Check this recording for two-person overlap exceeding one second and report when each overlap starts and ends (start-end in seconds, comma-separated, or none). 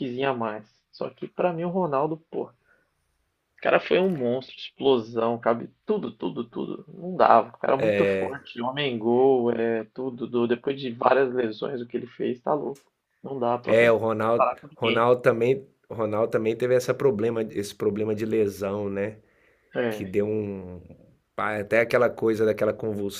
13.7-15.1